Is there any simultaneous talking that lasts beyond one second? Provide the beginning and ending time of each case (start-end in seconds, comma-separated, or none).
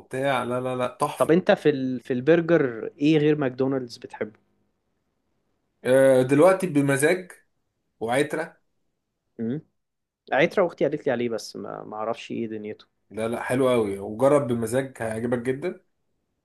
none